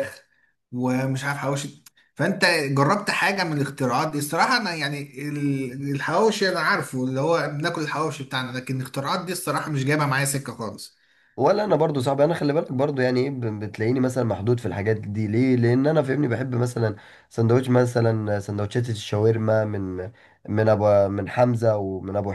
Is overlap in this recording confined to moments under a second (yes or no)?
yes